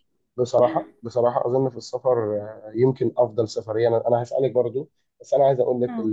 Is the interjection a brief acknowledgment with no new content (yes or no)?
yes